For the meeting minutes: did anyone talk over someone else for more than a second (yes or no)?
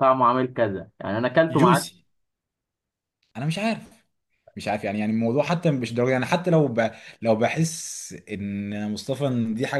no